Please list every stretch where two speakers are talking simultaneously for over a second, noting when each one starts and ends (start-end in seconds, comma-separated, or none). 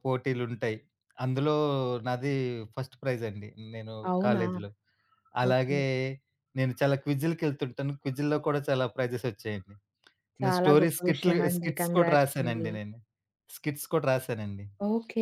10.4-12.7